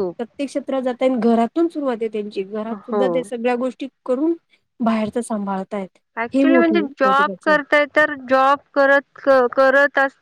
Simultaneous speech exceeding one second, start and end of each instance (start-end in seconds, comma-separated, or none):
none